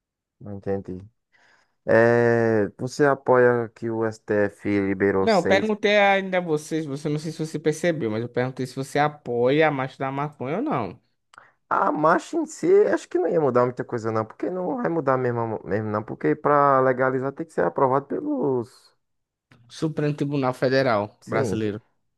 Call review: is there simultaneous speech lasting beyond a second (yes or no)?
no